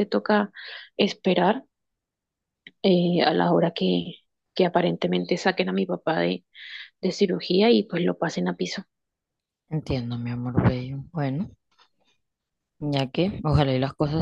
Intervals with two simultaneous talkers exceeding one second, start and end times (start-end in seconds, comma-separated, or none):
none